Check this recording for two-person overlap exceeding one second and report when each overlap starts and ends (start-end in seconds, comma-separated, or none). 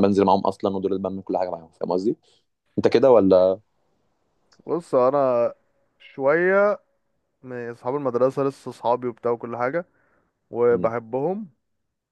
none